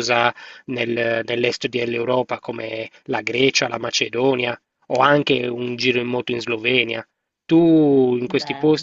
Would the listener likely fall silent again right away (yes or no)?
yes